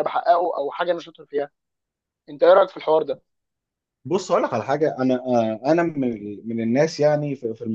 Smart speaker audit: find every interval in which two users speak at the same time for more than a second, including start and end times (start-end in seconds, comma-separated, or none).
none